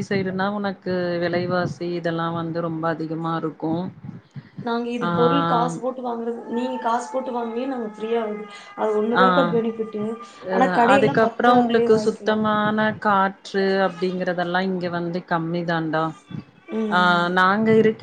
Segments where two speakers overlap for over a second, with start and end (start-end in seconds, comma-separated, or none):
10.9-12.4